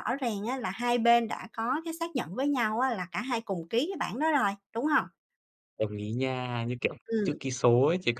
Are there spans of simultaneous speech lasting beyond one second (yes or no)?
no